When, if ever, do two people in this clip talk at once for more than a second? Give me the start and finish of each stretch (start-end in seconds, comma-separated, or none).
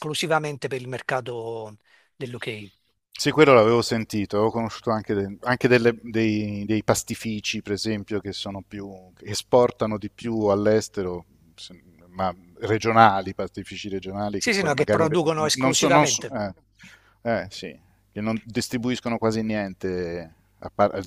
14.4-16.3